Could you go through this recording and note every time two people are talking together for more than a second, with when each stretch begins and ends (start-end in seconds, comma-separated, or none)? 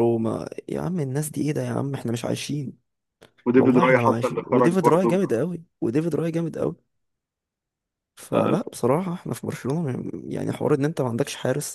3.5-5.2